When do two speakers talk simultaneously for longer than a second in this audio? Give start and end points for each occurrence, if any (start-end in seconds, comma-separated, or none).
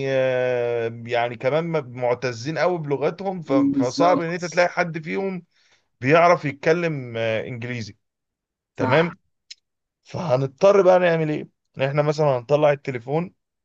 3.5-4.7